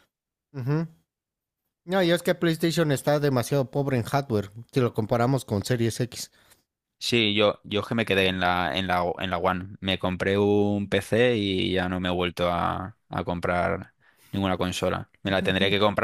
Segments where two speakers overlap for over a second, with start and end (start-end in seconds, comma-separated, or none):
none